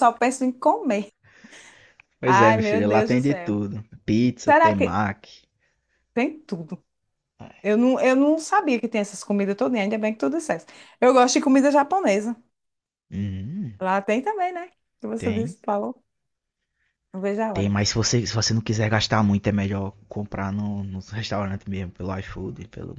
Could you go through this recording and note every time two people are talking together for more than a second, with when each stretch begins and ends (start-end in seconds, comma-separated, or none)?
2.2-3.6